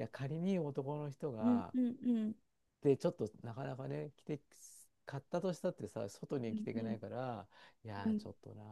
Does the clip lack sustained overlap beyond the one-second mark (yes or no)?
yes